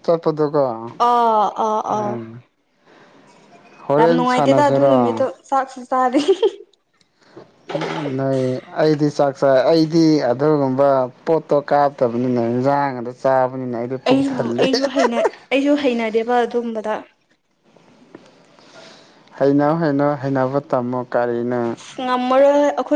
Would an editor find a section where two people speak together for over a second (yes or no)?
yes